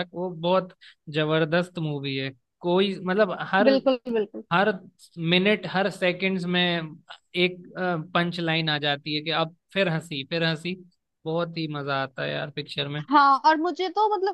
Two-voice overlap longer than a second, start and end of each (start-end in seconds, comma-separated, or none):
none